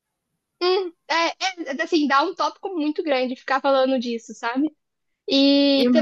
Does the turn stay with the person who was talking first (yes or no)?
yes